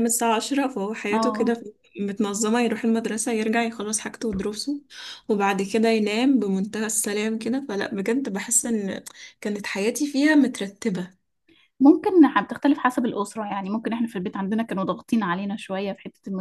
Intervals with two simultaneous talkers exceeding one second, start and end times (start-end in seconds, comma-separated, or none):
none